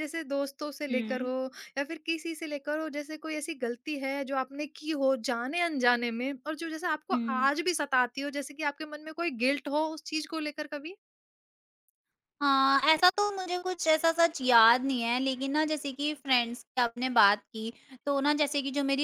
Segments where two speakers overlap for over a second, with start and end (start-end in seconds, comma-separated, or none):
none